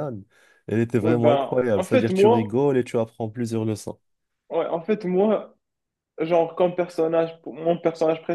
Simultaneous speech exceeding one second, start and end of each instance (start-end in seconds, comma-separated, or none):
1.0-2.6